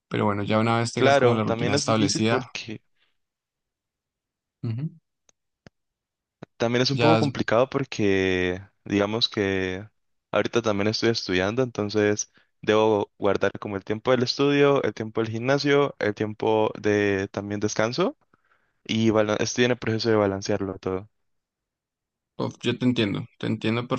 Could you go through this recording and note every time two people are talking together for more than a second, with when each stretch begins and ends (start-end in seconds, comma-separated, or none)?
0.9-2.5